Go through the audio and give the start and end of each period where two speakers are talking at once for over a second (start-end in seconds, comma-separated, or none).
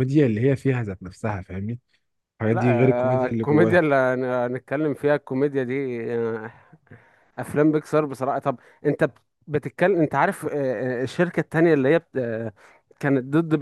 2.5-3.8